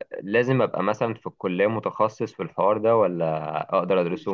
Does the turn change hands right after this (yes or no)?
yes